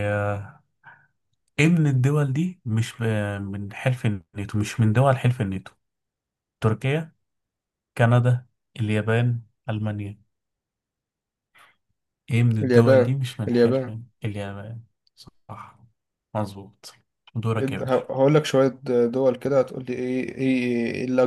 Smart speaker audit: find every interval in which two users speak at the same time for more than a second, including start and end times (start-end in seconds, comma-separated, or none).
12.6-14.0